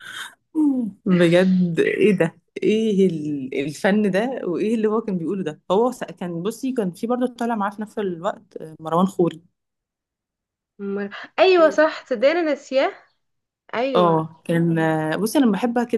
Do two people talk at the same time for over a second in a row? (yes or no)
no